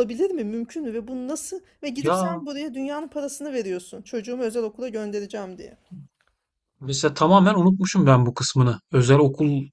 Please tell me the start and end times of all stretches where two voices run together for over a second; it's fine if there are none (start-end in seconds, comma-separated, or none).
none